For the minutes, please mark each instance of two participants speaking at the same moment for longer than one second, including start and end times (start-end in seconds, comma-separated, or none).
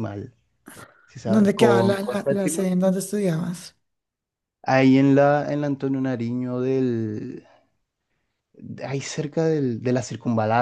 1.2-2.7